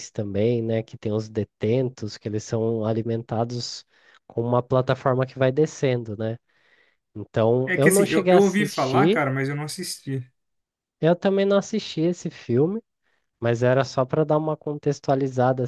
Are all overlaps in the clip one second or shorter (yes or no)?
no